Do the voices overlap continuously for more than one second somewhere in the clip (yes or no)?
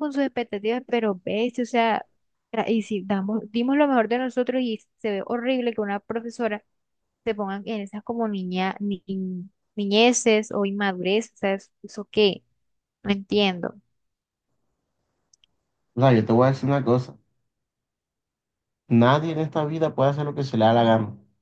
no